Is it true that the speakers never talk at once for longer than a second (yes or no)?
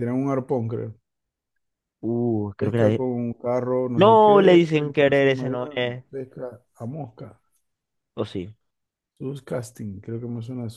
no